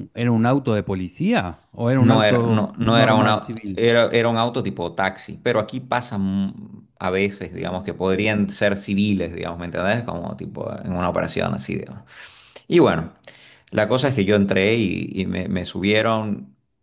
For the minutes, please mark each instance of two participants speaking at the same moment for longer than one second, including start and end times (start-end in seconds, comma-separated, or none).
2.0-3.9